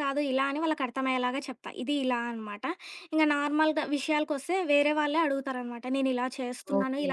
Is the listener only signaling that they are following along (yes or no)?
yes